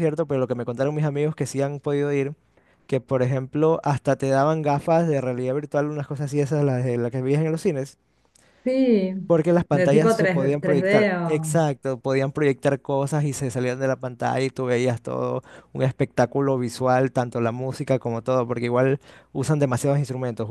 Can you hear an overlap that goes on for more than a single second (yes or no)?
yes